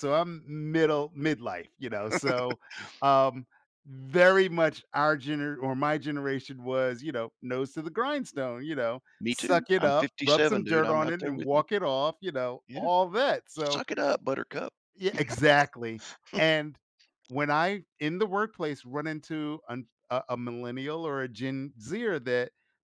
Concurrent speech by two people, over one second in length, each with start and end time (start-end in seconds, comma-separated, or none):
9.2-11.6